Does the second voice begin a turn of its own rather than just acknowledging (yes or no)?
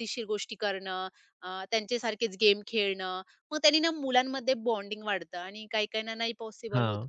no